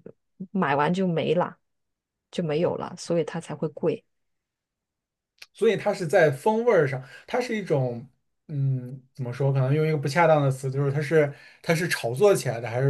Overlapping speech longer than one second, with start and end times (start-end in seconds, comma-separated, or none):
none